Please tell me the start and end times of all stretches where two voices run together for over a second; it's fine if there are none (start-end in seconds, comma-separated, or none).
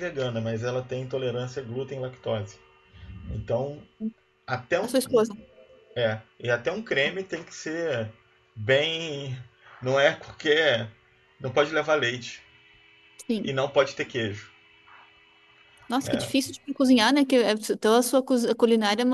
none